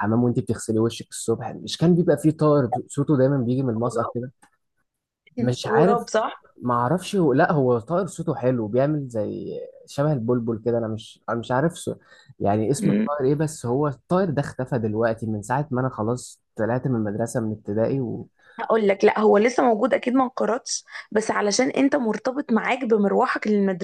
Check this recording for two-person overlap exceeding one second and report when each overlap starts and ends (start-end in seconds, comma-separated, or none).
none